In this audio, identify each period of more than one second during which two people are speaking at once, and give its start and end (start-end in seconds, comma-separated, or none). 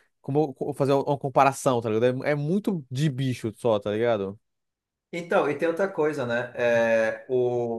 none